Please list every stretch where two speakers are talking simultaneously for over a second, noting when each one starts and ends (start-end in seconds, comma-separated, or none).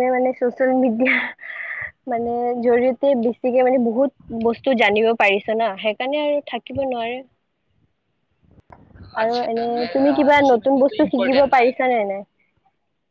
9.2-11.7